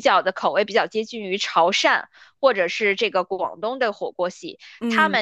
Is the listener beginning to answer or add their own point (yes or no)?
no